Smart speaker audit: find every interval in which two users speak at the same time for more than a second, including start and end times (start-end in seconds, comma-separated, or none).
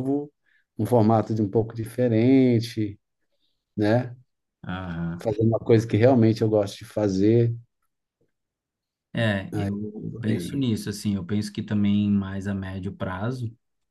none